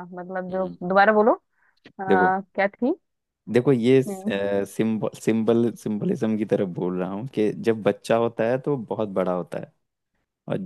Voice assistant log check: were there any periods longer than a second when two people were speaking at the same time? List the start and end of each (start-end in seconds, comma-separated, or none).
none